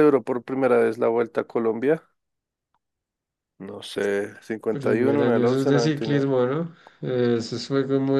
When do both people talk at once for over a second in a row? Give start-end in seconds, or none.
4.7-6.3